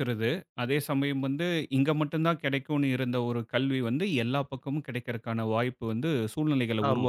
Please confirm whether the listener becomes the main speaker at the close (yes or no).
yes